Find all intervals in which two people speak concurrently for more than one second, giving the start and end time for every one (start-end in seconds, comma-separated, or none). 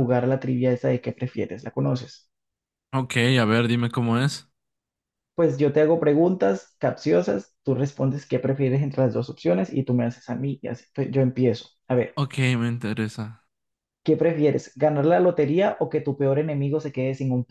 none